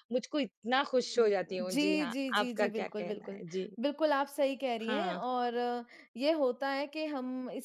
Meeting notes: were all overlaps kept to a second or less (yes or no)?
no